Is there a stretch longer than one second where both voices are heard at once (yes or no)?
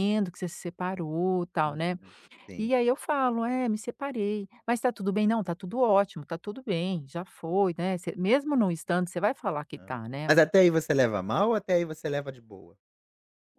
no